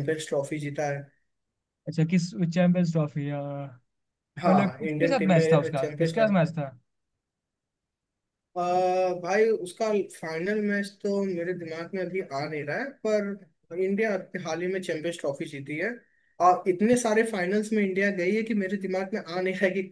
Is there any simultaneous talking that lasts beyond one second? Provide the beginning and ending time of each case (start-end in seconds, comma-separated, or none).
4.5-6.4